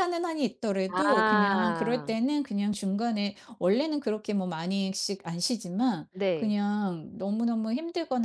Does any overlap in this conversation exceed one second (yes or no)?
yes